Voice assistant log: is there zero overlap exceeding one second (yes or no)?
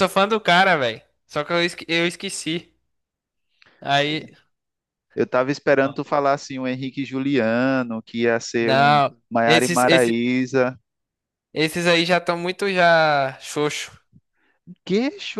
no